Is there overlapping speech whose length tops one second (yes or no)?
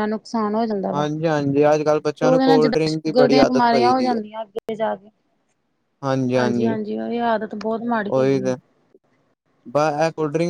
yes